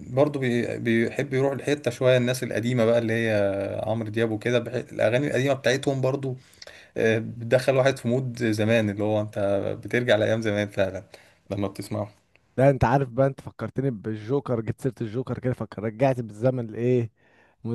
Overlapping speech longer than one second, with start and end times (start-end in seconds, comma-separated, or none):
none